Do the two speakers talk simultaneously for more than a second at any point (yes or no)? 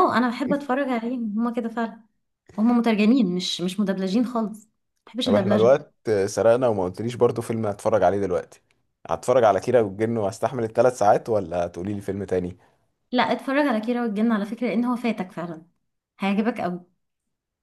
no